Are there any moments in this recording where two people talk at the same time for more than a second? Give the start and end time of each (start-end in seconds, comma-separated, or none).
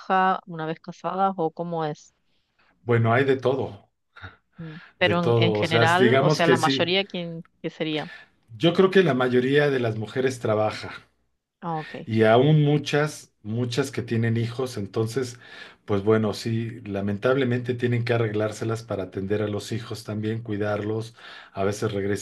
5.0-6.9